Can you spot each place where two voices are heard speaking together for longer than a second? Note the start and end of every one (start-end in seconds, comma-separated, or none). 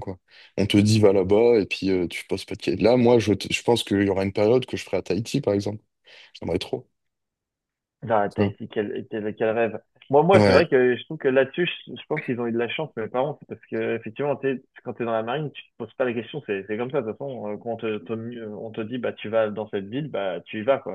none